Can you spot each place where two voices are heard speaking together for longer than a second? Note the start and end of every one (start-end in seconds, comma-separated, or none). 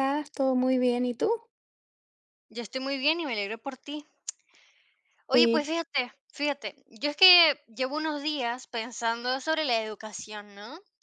none